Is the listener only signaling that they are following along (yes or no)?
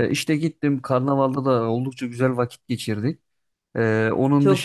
yes